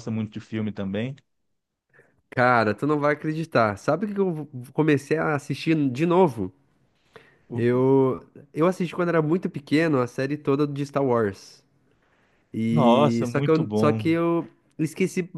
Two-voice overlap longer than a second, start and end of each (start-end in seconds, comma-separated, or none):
12.7-14.2